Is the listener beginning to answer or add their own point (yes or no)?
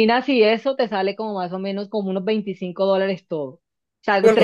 no